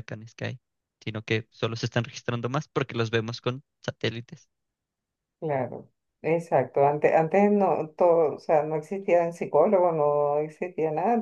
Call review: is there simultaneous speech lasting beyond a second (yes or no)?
no